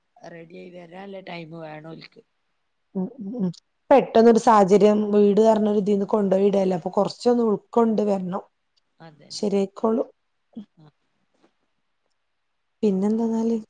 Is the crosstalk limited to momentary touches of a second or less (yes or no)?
yes